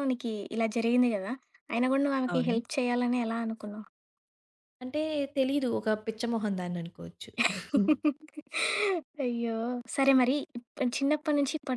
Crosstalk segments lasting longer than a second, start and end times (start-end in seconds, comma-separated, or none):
none